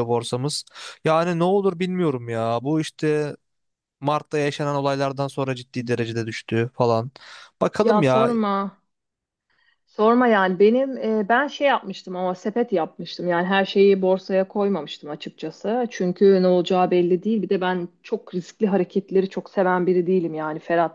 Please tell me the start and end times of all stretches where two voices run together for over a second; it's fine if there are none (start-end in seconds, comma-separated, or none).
none